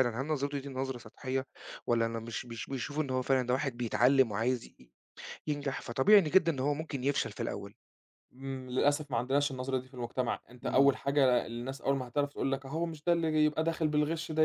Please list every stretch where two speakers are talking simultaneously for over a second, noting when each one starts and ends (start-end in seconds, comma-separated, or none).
none